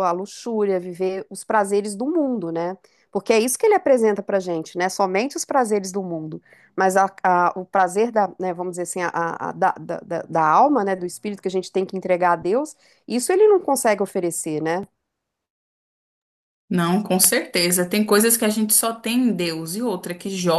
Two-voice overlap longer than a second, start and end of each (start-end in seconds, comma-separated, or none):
none